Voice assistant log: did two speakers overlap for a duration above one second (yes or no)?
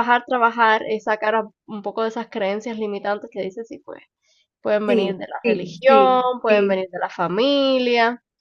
yes